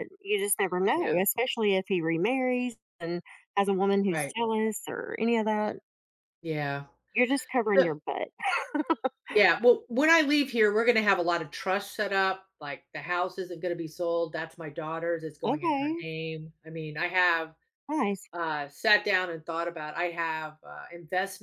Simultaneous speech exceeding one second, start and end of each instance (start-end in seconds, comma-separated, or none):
none